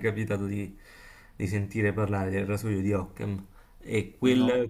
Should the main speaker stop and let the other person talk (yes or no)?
no